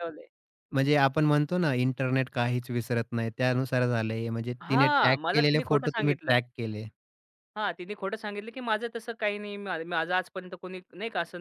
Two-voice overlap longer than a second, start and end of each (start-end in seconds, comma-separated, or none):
4.7-6.4